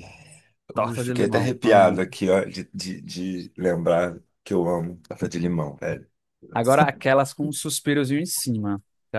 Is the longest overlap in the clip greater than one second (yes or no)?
yes